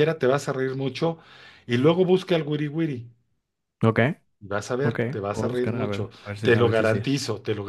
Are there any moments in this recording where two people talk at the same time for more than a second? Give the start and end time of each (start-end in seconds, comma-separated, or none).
4.8-7.0